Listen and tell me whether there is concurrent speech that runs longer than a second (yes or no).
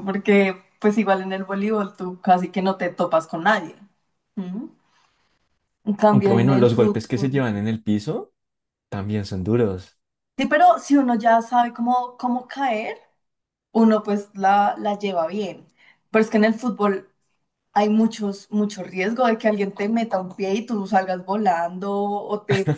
yes